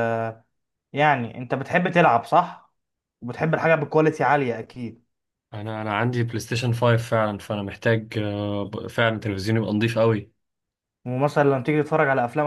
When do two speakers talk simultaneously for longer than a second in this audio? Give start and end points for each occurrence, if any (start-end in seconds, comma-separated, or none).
none